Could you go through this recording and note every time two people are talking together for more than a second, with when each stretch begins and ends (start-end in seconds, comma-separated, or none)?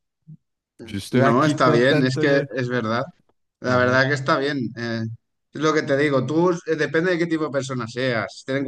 1.1-2.5